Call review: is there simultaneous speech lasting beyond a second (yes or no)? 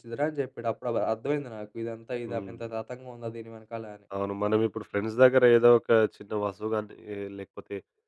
no